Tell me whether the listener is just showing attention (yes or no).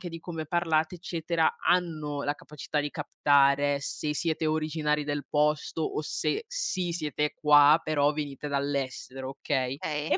yes